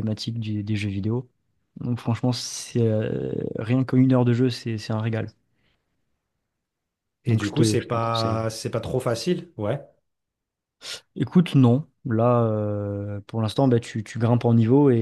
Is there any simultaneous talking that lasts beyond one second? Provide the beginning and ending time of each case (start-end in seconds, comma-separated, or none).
7.3-8.5